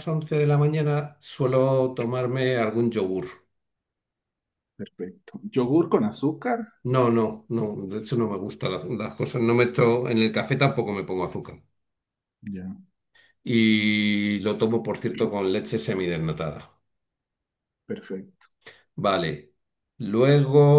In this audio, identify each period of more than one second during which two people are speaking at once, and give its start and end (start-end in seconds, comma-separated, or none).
none